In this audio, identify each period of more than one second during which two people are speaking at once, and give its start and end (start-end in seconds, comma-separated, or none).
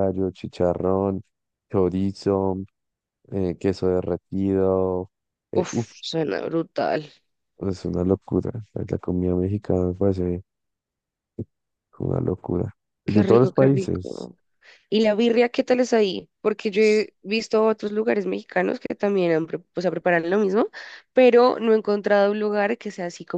13.1-14.3